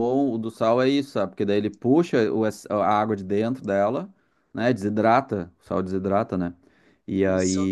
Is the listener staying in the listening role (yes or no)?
yes